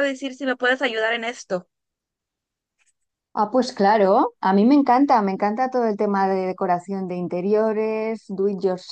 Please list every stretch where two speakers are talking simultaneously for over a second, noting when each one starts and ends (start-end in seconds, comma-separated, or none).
none